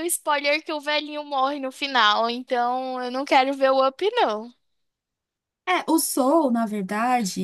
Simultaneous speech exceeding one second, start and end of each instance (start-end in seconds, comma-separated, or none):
none